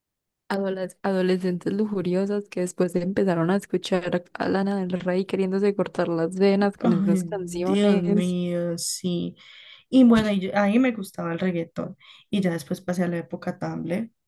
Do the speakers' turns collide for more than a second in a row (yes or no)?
yes